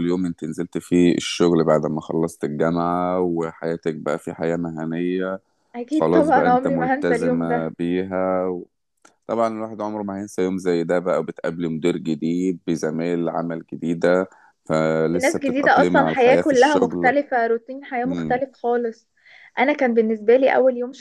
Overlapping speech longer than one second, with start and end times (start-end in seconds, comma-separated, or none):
5.9-7.7, 15.2-17.1